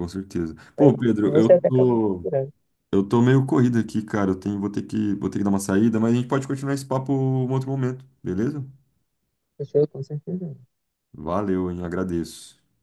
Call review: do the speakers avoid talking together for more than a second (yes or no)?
no